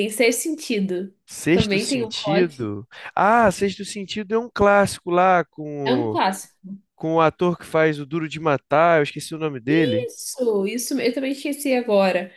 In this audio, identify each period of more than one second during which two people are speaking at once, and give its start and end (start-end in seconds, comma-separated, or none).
1.5-2.7